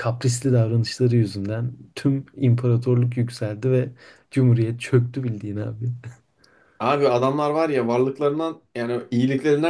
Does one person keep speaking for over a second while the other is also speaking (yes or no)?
no